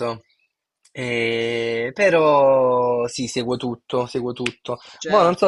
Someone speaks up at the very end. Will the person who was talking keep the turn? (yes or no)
yes